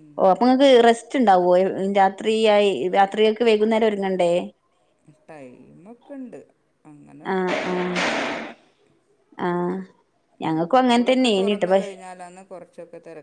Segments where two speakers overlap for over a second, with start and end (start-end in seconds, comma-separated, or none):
10.5-11.9